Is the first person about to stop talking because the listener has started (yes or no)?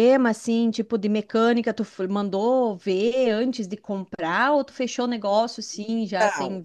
yes